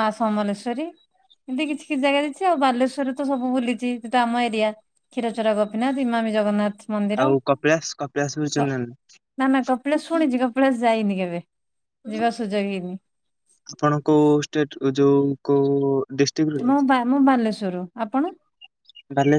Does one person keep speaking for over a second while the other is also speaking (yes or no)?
no